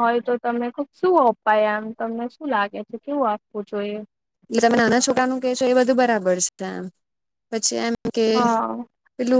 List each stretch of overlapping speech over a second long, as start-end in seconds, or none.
none